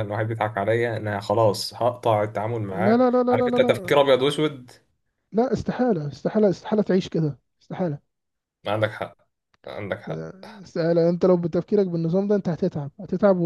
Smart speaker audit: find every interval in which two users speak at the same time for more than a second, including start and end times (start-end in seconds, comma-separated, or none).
2.7-4.1